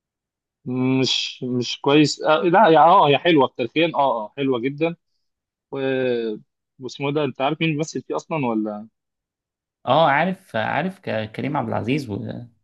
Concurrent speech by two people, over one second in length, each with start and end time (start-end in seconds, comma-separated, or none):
none